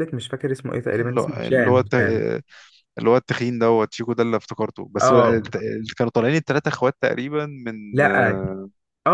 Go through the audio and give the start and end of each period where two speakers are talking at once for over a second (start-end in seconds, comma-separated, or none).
1.0-2.2